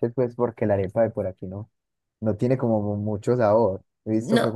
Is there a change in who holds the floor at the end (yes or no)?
no